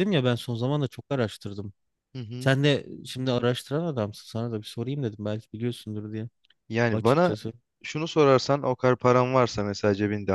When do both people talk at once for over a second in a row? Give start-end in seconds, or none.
none